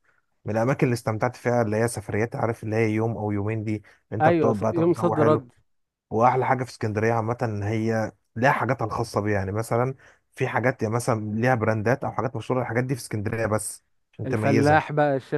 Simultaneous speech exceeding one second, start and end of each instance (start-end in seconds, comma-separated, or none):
4.2-5.5